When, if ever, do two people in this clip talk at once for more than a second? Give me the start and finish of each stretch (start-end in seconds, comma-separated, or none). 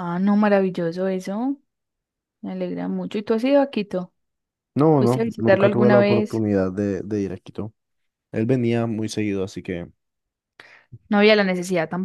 5.0-6.4